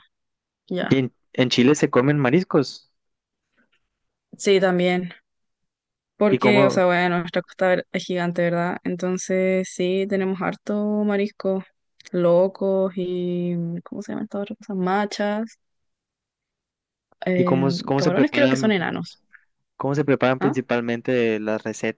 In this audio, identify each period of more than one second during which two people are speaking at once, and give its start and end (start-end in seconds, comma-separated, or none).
17.4-18.7